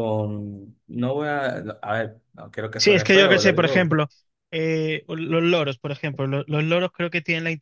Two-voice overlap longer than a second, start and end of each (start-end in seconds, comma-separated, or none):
2.8-4.0